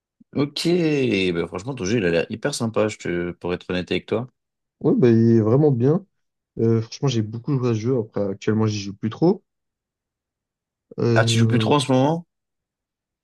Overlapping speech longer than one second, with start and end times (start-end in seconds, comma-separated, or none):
none